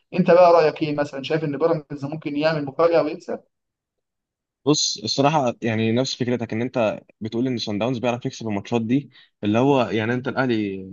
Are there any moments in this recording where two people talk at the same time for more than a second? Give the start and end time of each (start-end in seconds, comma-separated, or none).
none